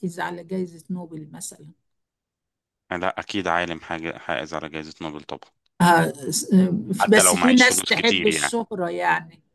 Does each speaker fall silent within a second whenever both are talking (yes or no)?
no